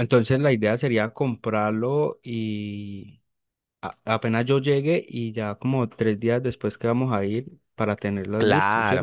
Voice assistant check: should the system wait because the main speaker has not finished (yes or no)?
no